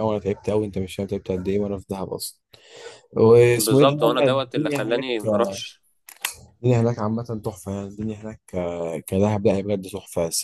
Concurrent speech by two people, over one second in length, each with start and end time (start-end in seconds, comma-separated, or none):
3.6-5.1